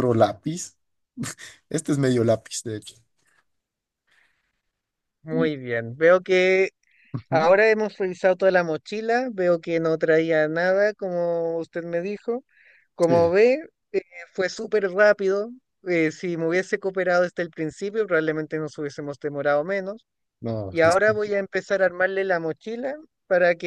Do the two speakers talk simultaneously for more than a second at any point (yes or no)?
no